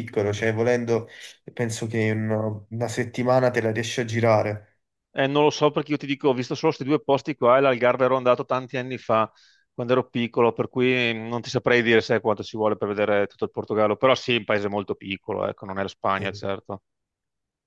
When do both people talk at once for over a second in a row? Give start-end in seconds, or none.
none